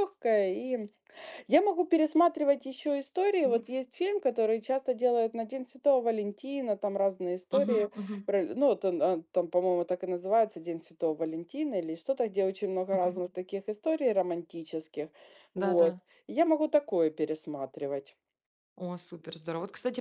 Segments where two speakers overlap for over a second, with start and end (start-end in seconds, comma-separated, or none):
none